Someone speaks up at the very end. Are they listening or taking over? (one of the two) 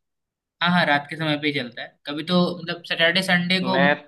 listening